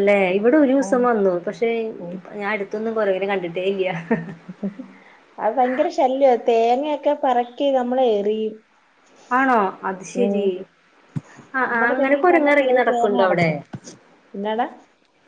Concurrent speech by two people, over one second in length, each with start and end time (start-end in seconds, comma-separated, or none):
11.7-13.5